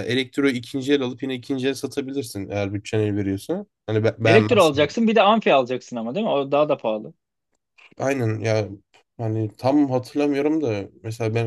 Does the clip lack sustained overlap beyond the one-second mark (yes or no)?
yes